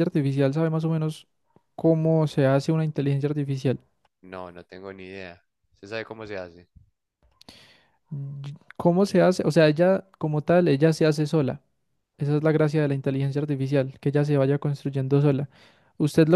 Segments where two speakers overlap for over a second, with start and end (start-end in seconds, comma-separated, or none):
none